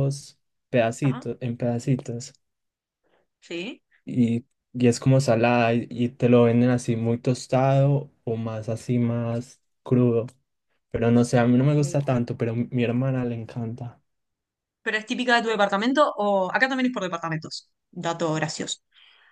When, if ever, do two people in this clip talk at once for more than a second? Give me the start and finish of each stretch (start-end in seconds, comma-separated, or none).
none